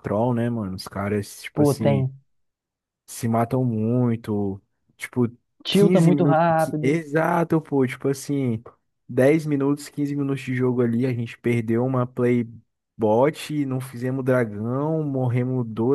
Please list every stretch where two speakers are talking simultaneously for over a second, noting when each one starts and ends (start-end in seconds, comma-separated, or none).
5.7-7.0